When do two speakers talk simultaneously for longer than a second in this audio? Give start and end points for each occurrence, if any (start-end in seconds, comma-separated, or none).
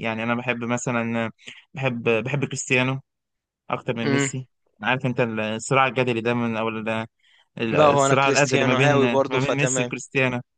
7.8-9.9